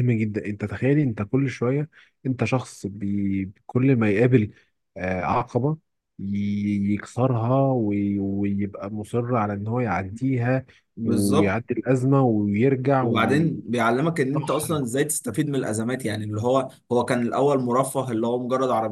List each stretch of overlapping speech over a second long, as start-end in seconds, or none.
none